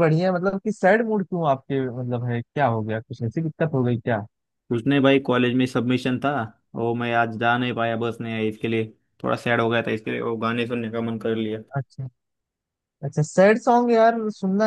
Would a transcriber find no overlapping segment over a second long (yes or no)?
yes